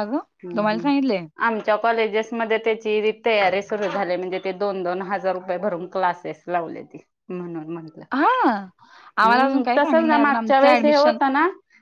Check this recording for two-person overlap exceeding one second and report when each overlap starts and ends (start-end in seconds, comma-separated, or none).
9.2-11.2